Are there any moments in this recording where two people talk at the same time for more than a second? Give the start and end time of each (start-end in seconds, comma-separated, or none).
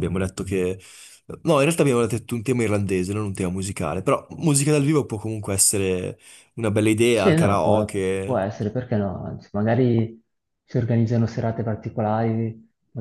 7.1-8.4